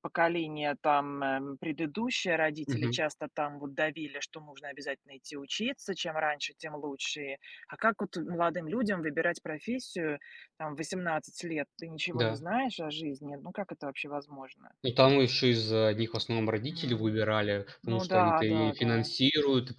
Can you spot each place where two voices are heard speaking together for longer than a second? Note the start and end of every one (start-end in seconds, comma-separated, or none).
17.8-19.1